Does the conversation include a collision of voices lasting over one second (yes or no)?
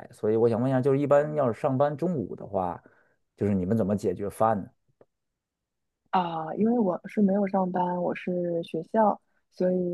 no